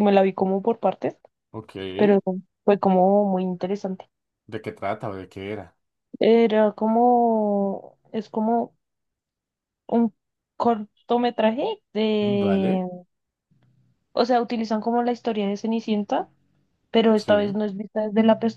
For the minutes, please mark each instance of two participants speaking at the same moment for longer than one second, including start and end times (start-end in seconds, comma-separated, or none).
none